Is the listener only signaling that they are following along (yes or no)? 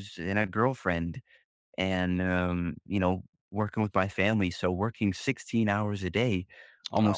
yes